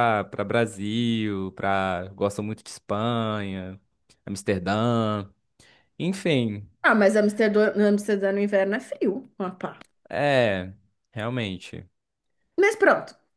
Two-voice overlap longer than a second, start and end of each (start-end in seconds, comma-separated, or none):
none